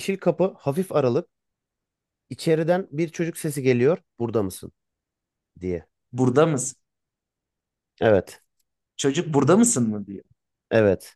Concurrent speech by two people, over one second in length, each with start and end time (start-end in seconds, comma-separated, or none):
none